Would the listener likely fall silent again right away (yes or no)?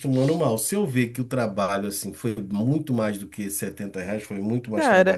no